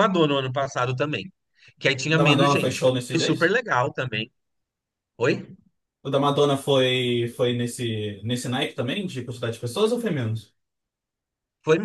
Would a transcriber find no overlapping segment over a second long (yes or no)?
no